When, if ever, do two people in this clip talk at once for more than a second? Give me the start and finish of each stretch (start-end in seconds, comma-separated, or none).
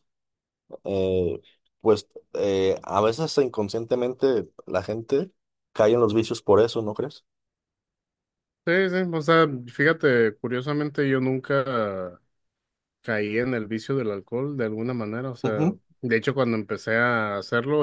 none